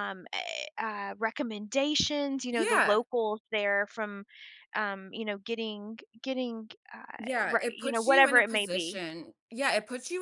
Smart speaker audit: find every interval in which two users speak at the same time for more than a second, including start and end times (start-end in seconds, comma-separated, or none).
7.2-9.0